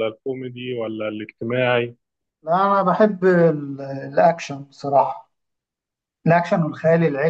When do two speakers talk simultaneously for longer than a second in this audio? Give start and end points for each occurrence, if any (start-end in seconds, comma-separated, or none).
none